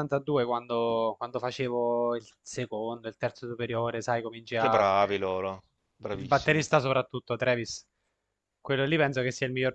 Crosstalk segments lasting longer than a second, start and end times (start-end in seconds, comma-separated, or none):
none